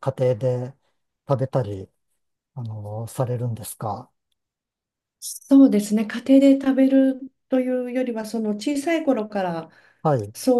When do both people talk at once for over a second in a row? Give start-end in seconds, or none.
none